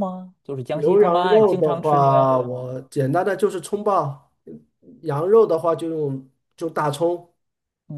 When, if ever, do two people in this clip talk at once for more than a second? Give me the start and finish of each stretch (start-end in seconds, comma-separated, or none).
0.7-2.7